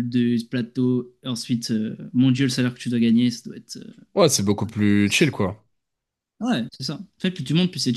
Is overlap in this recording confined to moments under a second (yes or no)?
yes